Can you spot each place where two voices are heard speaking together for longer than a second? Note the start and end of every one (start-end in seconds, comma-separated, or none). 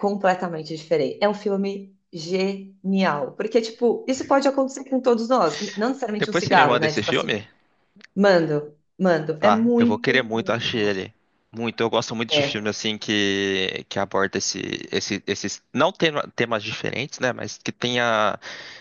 6.2-7.4, 9.4-11.0